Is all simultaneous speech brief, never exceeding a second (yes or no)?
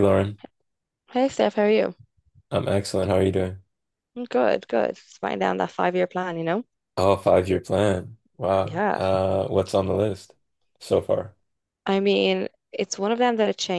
yes